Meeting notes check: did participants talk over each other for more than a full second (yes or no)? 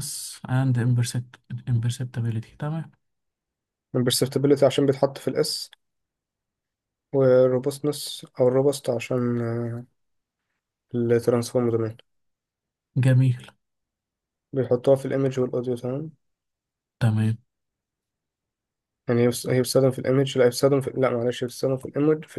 no